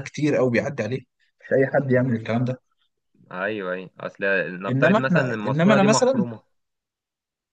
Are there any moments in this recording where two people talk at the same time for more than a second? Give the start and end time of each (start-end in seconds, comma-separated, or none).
4.7-6.2